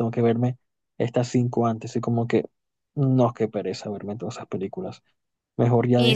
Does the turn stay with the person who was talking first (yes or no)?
yes